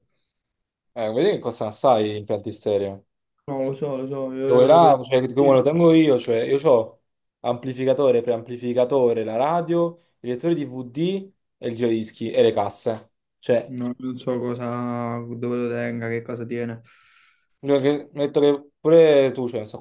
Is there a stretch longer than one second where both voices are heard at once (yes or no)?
yes